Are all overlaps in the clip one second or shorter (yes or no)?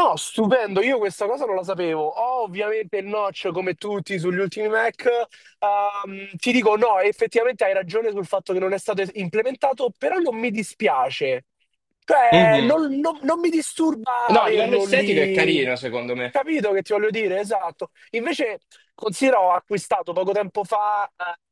no